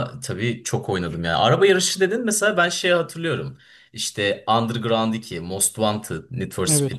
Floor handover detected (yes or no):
no